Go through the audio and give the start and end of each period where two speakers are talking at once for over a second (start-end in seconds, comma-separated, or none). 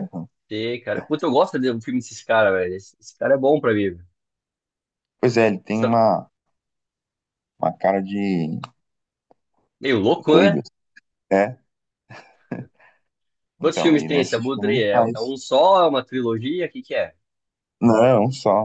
13.6-15.3